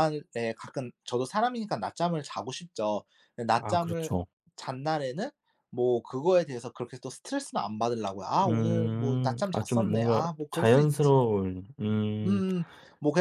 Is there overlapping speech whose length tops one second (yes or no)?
yes